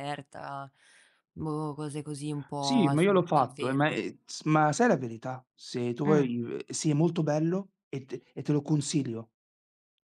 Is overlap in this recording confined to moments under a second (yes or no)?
no